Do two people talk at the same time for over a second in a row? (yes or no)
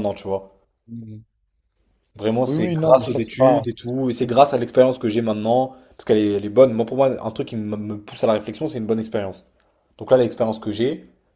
yes